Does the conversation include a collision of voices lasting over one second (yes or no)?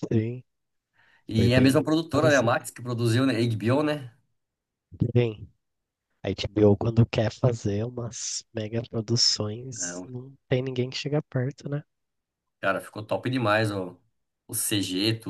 yes